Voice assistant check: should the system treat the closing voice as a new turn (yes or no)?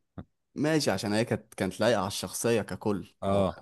no